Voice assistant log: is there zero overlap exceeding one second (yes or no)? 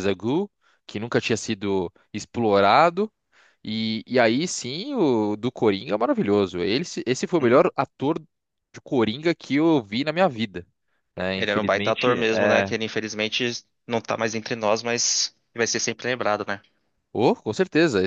no